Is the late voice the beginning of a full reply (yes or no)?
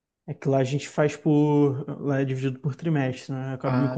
no